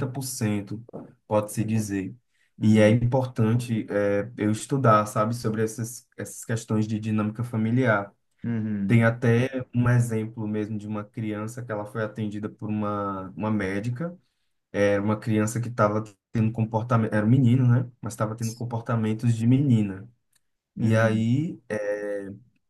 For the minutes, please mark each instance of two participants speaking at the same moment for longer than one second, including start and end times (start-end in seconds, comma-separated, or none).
none